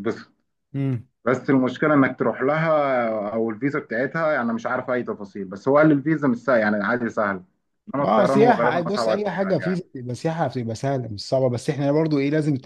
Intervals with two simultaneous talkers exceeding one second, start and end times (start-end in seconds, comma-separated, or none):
8.0-9.8